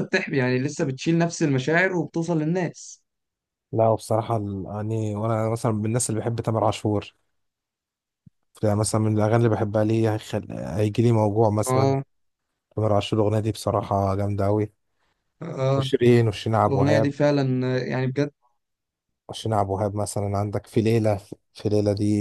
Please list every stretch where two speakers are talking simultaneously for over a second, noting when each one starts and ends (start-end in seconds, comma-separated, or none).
none